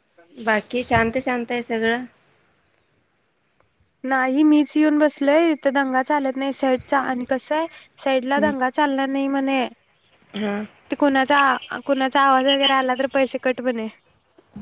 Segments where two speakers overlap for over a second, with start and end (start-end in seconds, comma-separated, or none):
none